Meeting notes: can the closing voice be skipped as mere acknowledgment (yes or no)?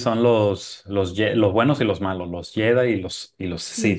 yes